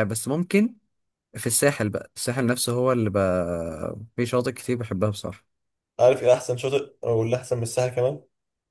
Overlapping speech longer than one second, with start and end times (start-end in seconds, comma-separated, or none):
none